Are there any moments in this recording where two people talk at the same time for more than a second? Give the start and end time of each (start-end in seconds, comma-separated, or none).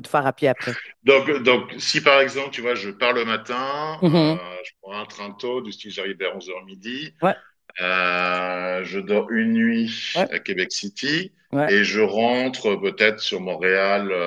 none